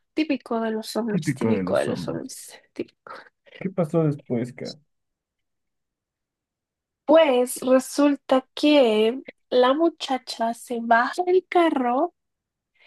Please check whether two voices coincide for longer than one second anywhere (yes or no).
yes